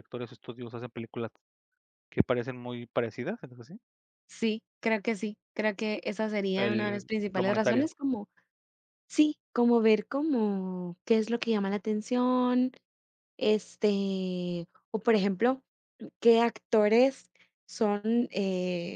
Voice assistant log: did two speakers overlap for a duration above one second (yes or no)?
yes